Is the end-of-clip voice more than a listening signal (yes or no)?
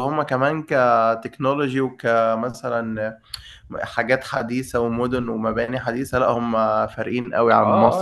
yes